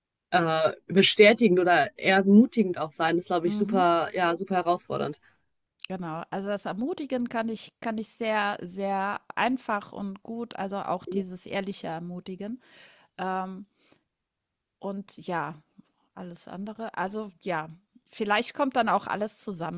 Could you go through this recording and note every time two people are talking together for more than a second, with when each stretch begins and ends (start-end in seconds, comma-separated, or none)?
none